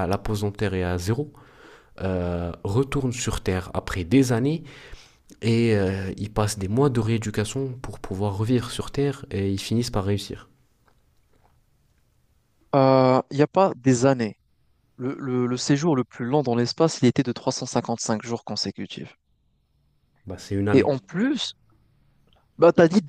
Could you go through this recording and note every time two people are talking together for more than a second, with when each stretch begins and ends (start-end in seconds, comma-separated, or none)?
none